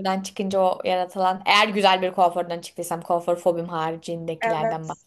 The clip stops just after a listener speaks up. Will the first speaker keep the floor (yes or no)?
no